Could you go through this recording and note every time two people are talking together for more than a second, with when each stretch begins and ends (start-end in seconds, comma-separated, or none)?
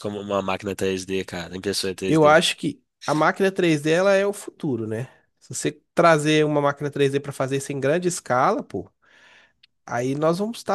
none